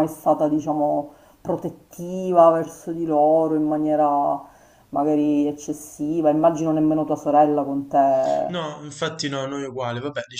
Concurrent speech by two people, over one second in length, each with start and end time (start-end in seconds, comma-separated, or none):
none